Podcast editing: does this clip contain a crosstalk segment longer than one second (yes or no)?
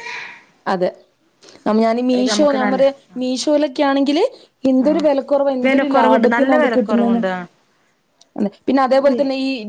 yes